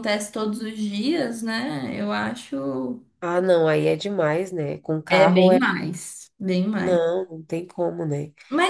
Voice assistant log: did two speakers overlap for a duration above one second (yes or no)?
no